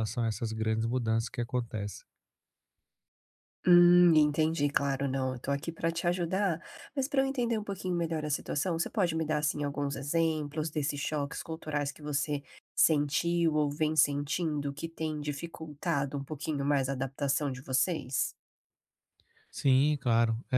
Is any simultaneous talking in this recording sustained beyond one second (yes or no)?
no